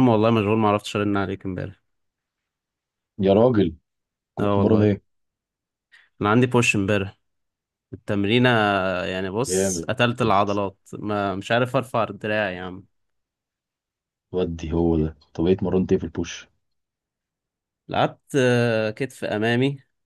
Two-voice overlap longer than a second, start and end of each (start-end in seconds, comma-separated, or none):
none